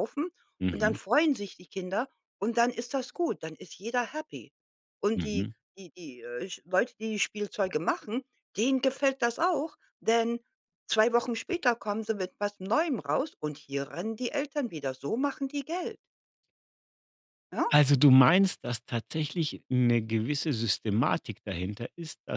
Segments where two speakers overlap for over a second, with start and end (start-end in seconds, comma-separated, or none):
none